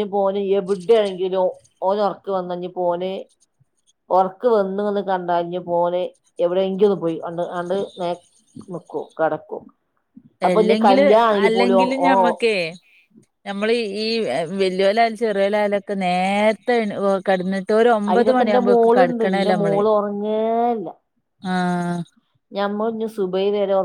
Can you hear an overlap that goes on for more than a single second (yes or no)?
yes